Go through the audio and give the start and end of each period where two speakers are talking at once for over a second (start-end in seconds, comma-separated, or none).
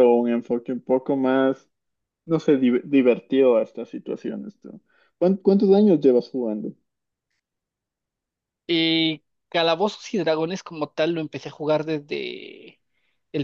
none